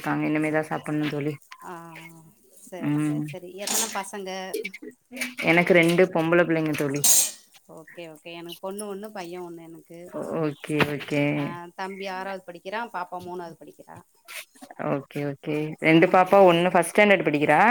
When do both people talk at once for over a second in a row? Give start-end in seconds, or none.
none